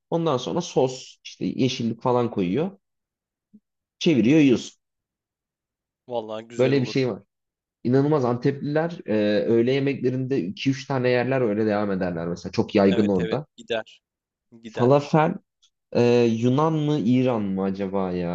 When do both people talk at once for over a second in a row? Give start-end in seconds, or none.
none